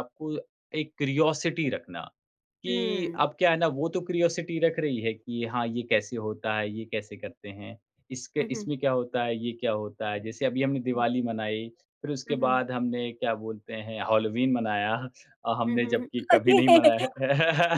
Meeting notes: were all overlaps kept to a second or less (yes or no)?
no